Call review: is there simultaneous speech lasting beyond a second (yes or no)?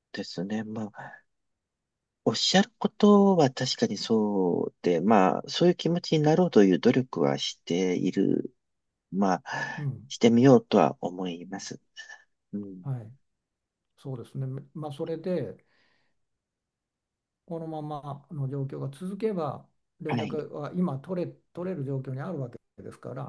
no